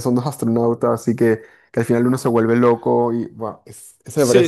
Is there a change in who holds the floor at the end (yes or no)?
yes